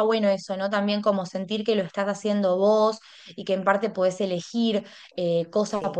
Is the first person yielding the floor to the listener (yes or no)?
no